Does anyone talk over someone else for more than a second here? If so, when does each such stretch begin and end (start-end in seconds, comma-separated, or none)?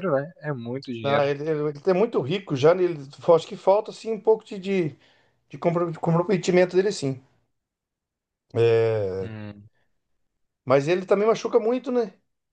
none